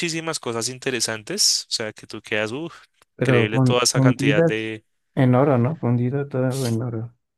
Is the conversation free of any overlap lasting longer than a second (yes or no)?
no